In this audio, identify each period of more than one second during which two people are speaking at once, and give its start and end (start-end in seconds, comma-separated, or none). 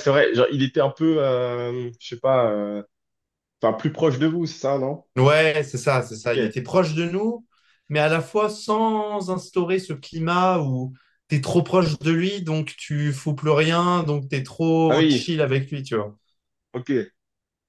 none